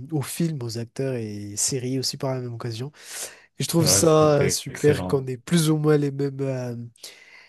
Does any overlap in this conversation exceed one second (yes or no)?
yes